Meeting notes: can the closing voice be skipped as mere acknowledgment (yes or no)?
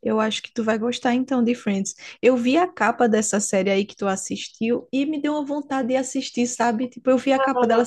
yes